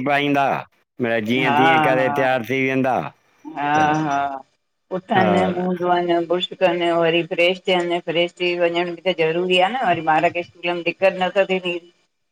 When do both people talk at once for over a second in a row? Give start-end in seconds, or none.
none